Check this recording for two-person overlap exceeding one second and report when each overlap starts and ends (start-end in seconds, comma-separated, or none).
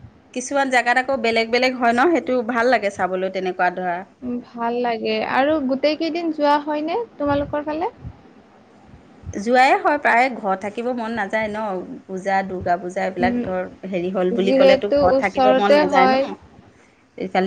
14.4-16.2